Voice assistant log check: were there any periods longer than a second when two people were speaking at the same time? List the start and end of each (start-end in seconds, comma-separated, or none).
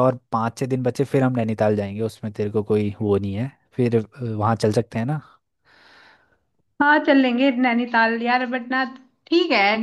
none